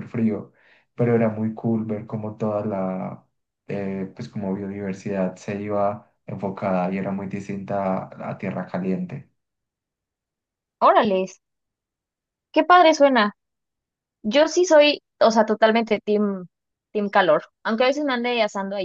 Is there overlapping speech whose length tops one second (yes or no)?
no